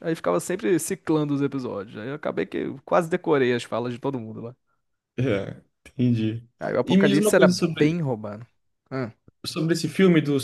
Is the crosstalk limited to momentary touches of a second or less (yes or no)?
no